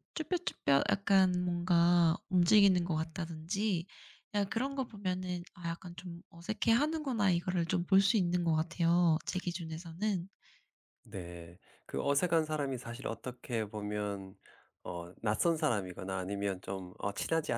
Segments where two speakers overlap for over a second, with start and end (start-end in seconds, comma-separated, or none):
none